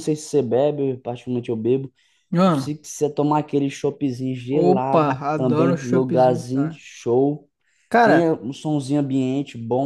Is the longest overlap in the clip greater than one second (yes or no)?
yes